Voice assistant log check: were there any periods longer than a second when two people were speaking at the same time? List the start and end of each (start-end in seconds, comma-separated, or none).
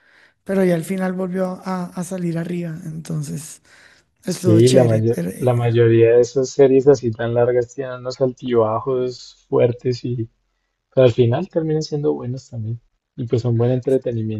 4.2-5.5